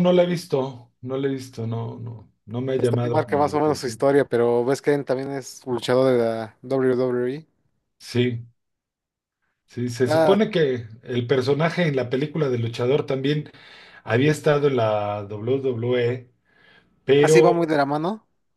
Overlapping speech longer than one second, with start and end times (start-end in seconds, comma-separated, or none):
2.8-4.0